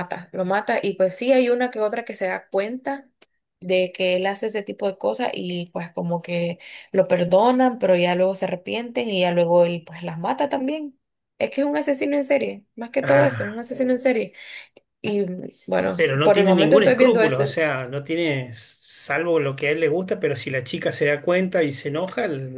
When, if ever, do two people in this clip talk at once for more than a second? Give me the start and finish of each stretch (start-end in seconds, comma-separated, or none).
15.9-17.5